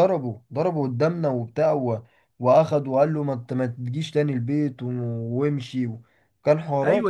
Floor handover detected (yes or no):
yes